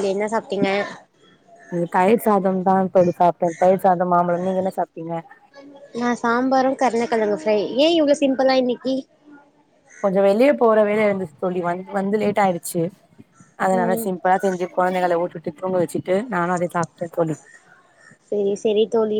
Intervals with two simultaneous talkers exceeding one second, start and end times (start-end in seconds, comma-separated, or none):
none